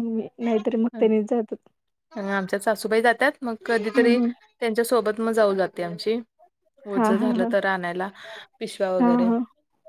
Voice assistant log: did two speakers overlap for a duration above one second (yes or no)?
no